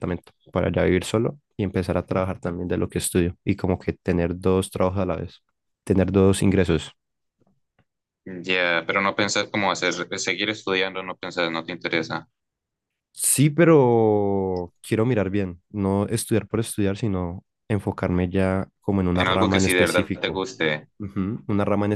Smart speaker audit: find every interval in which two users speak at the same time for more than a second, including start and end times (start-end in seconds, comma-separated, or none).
19.1-20.4